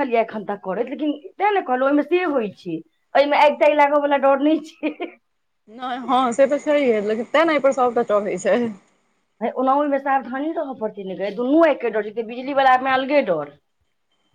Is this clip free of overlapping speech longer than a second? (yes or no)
yes